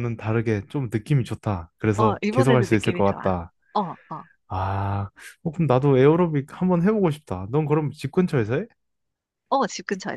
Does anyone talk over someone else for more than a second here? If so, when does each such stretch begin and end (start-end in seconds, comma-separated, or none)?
2.0-3.4